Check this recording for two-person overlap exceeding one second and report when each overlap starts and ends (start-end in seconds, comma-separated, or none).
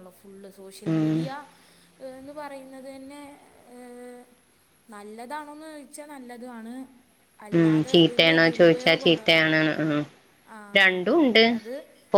7.6-9.4